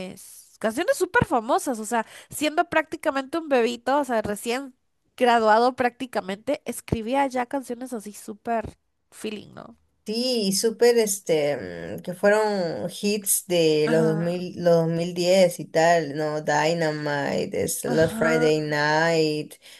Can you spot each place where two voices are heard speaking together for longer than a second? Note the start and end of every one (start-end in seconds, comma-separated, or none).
none